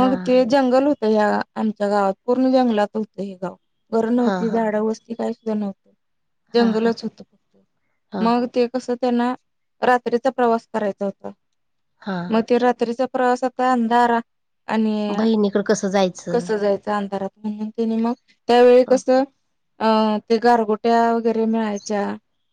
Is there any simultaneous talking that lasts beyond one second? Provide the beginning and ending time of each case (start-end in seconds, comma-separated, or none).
none